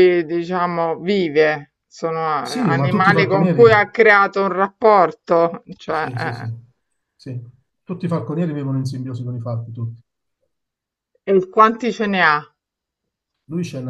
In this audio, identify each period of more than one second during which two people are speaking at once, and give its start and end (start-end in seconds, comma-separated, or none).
2.4-3.7